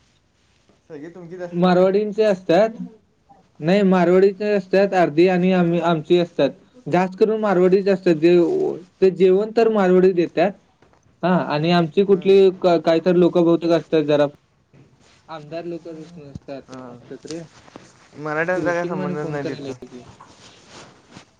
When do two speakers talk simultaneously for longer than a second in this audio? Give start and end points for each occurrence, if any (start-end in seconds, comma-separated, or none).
18.5-19.7